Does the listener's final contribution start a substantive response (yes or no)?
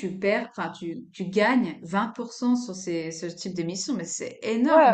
yes